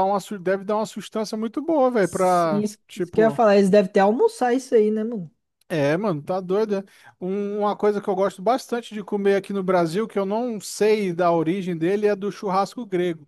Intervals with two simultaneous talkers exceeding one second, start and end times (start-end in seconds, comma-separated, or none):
2.0-3.4